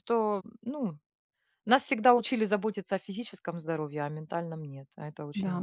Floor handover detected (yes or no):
yes